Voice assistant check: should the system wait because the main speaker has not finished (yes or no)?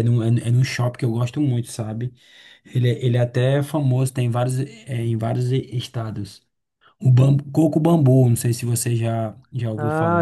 no